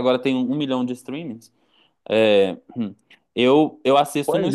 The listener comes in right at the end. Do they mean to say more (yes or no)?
yes